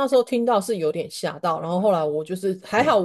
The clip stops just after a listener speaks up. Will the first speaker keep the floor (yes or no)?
yes